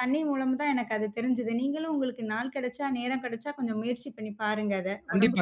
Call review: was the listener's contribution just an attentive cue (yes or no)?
no